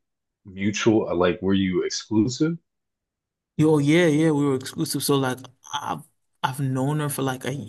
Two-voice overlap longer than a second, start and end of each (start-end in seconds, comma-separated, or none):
none